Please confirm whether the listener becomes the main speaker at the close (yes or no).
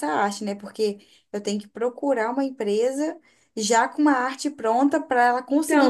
yes